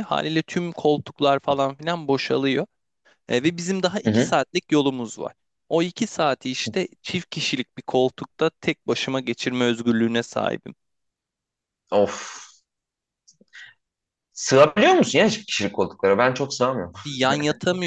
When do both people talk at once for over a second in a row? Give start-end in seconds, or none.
none